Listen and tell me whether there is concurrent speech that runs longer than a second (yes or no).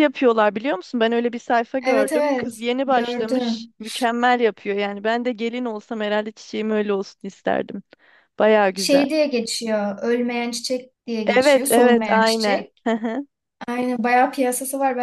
yes